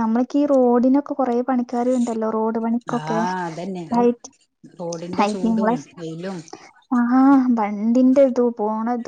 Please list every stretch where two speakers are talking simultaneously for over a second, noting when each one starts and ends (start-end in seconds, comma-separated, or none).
none